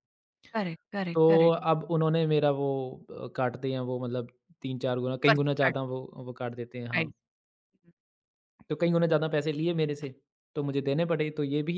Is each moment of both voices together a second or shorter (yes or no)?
yes